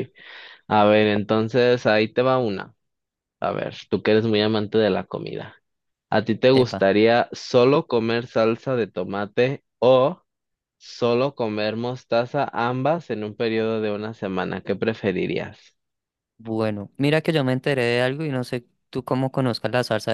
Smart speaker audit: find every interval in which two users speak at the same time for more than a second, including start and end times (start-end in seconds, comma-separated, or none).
none